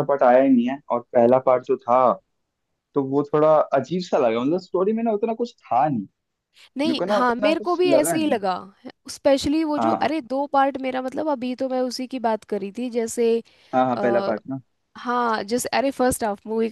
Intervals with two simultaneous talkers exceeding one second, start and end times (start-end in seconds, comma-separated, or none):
6.8-8.4